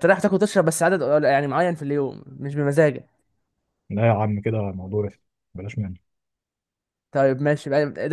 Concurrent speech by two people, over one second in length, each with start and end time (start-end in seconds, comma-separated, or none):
none